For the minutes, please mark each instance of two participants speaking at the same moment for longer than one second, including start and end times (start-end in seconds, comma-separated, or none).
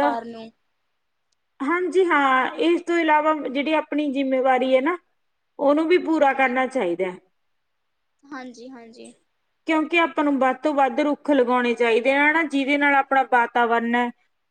none